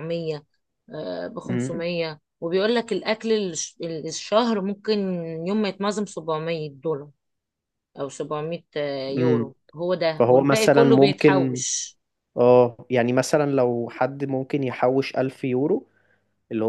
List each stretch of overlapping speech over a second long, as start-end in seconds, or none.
10.2-11.6